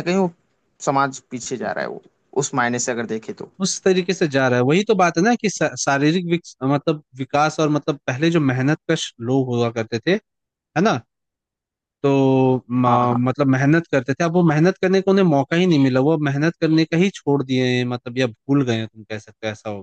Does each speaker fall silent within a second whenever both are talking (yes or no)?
yes